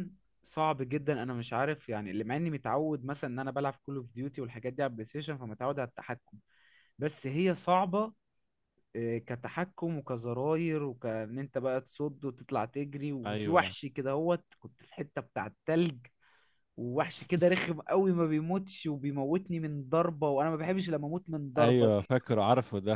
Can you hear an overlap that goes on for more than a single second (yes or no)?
no